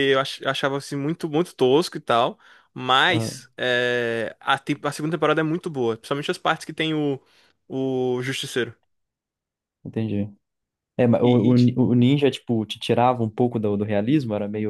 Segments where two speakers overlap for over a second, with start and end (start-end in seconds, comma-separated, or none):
none